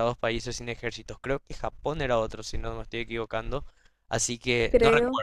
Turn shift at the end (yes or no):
no